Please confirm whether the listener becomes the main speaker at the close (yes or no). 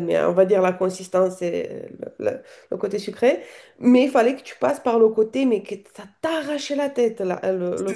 yes